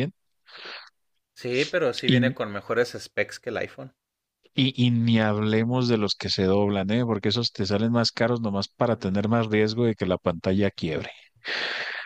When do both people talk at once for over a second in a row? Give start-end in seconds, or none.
none